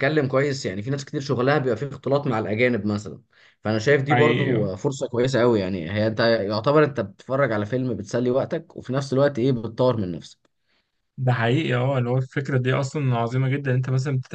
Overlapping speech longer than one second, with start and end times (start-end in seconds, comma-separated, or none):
none